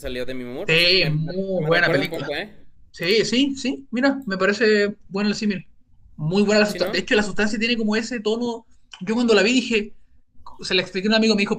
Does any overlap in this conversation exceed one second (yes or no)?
yes